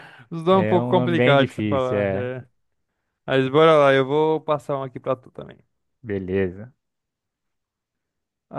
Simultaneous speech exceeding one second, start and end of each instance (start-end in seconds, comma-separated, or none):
0.5-2.3